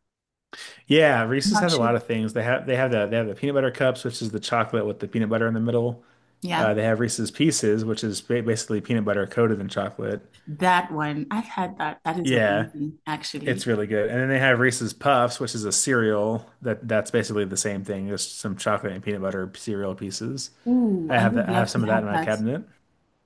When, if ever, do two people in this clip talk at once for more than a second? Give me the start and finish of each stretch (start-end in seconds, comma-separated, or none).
21.1-22.3